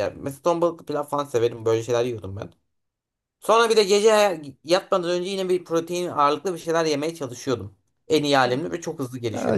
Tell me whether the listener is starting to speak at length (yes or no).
yes